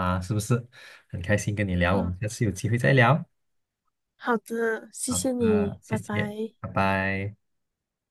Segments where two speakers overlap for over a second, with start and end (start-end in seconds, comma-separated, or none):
5.1-6.5